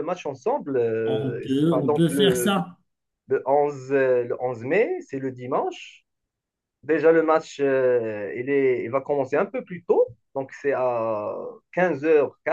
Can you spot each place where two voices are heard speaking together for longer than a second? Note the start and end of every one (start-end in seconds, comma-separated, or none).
1.1-2.6